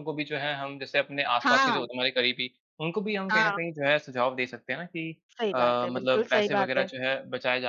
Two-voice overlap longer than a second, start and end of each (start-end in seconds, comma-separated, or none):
5.5-6.8